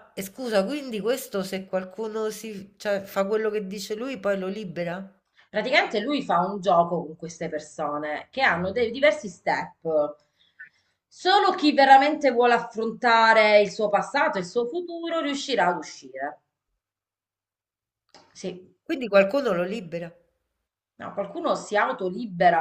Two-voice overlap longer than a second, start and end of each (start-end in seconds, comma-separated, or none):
none